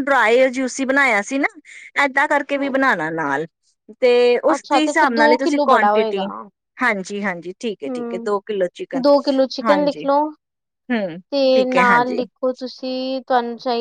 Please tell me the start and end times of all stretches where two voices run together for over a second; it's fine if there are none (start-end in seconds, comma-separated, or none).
4.5-6.2